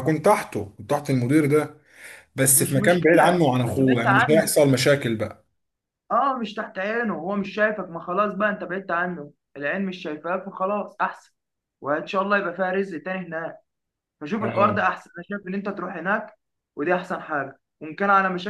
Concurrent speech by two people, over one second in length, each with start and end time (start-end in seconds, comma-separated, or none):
2.5-4.5